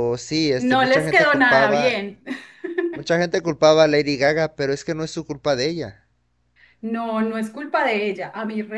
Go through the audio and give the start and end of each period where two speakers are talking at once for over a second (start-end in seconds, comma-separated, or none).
0.6-2.0